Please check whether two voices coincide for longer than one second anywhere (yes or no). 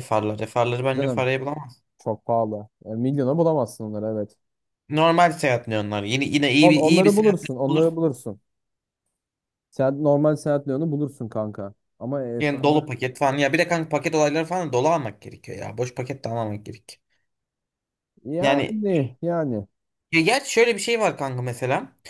yes